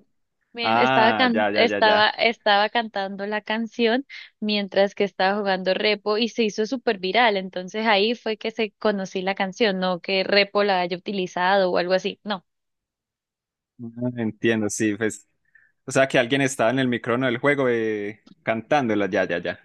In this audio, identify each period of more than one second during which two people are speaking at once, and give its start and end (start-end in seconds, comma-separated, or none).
0.6-2.1